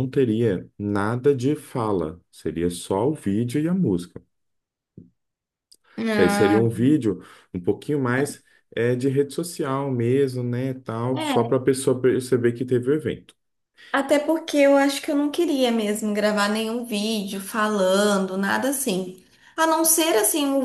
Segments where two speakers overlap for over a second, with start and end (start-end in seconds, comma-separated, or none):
none